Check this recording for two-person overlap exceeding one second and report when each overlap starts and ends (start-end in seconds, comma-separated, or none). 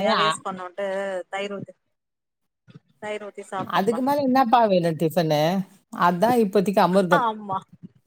none